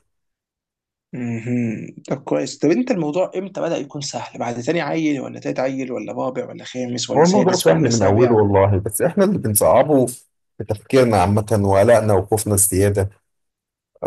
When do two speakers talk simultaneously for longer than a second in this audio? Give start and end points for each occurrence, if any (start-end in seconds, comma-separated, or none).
7.2-8.4